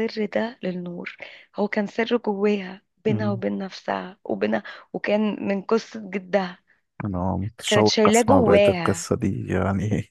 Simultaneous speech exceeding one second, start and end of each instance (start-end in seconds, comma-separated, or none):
7.7-9.1